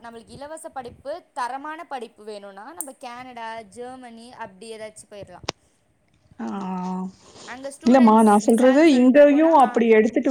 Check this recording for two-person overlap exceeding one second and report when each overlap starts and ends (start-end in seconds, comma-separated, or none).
7.9-9.7